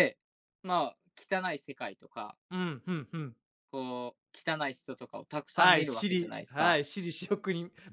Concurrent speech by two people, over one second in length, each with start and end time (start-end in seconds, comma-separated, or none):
5.5-6.8